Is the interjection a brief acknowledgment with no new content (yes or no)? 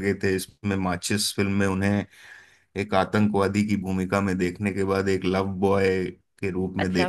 no